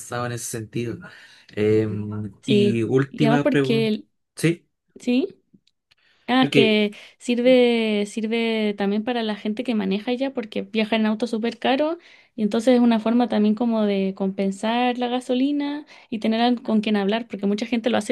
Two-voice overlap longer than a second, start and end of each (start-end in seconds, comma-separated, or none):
2.4-3.9